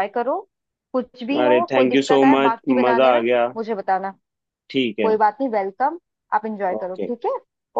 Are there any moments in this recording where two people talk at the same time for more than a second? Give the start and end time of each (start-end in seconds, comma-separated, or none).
1.4-3.5